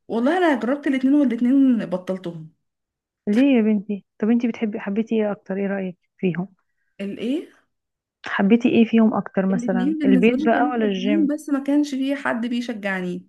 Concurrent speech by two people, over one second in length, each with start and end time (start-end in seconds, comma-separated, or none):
9.5-11.3